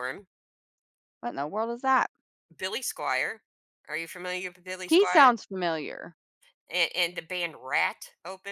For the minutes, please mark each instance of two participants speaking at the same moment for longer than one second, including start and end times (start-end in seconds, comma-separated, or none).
none